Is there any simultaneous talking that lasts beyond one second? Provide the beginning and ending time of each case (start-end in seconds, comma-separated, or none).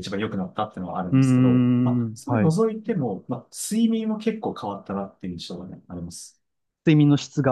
1.1-2.5